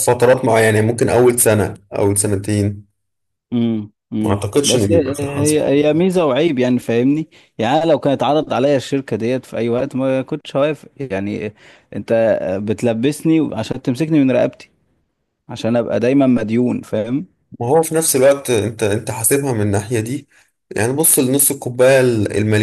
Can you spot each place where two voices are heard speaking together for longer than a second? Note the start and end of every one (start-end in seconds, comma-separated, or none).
4.2-5.6